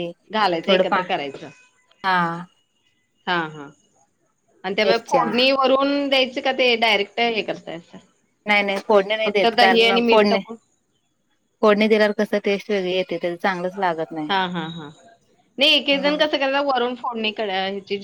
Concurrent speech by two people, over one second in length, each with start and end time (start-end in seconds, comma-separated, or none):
none